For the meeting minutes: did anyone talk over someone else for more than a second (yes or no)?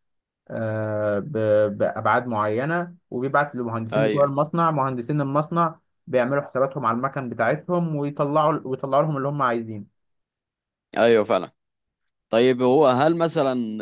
no